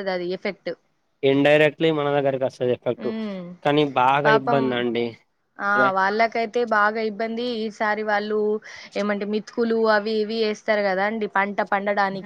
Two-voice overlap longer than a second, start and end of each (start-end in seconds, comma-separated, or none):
none